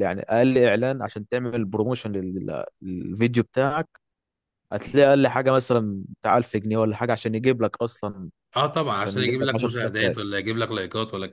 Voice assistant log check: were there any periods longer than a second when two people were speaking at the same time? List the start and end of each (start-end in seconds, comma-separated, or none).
8.9-10.2